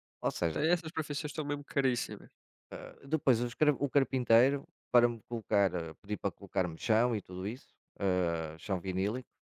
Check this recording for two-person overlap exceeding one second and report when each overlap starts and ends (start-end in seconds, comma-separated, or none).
none